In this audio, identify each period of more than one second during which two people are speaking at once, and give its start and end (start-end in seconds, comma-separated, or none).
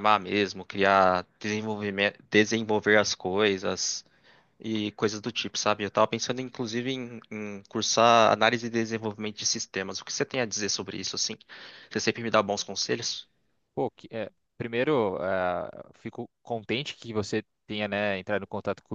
none